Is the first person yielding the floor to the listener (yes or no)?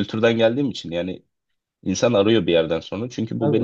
no